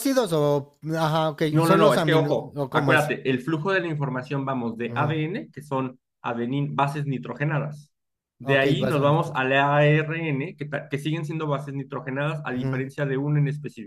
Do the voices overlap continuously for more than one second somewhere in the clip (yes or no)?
yes